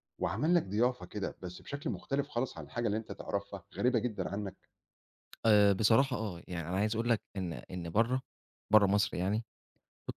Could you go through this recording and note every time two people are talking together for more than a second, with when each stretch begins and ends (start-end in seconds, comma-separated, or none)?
none